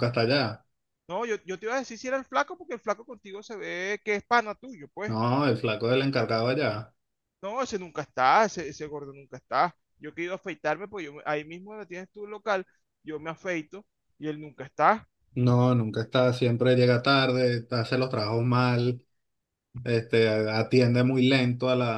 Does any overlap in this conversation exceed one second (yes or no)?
no